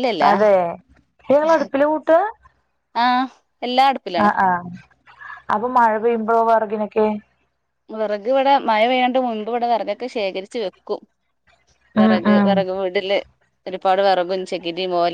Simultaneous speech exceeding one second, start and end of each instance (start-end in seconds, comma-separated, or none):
none